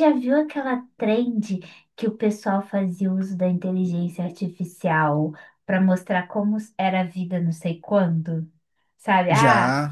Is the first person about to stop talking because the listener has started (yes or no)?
no